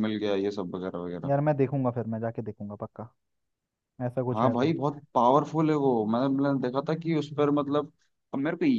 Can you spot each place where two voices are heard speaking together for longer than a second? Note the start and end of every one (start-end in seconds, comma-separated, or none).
none